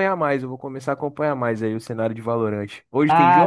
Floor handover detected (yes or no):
yes